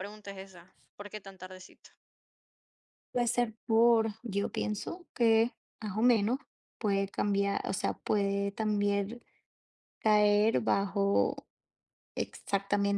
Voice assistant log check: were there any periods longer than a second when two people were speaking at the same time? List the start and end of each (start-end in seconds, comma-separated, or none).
none